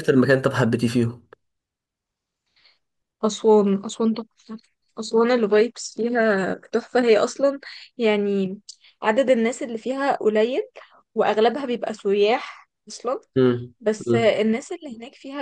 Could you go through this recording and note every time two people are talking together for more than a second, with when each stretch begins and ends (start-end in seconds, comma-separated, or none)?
none